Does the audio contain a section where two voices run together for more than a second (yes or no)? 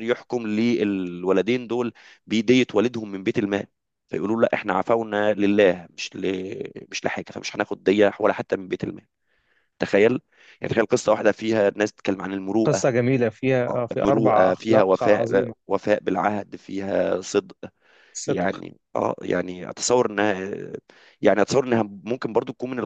yes